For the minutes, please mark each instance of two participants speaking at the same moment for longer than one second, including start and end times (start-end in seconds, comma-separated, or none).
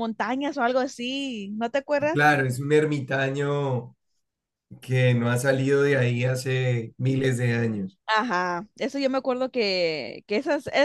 none